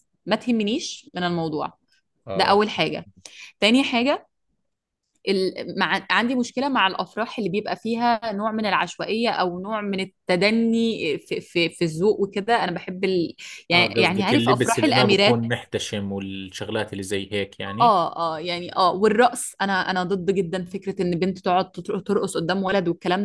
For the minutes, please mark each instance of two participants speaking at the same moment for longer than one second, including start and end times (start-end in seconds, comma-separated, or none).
13.7-15.4